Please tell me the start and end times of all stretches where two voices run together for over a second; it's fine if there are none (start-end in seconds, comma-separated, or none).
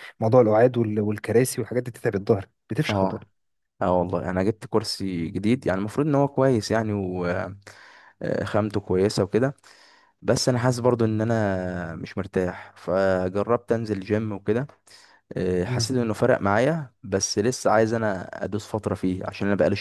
none